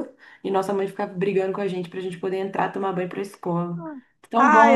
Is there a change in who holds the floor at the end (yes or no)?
yes